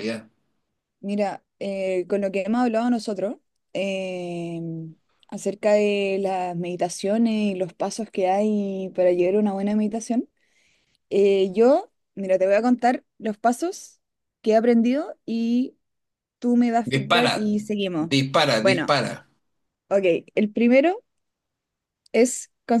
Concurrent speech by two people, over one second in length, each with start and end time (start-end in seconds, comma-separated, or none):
none